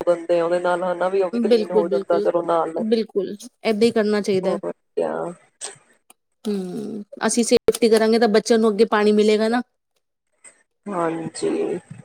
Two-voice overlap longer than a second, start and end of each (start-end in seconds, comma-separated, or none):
none